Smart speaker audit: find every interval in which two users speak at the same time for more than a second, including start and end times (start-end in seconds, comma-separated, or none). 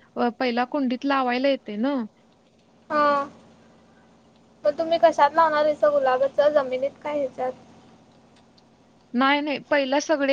none